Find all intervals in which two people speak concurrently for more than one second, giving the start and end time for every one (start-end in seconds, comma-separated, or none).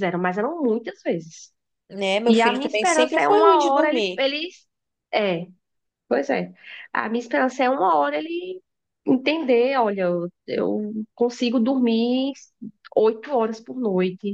2.2-4.3